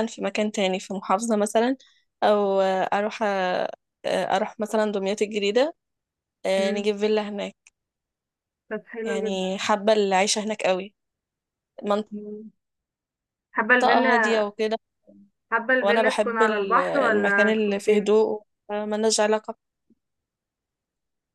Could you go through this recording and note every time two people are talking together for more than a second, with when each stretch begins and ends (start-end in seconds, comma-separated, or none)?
15.8-18.2